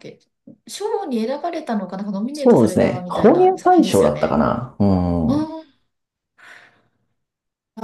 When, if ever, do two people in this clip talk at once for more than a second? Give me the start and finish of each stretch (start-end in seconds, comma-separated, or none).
2.3-4.4